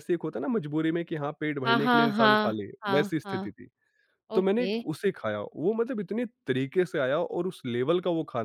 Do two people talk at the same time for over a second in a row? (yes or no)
yes